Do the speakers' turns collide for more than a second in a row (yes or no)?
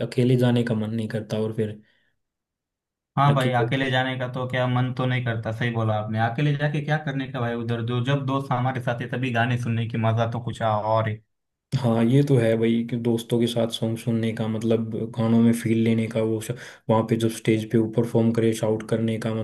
no